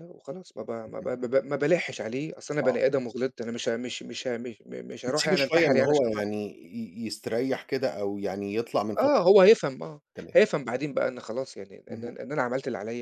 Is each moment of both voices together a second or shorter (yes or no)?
no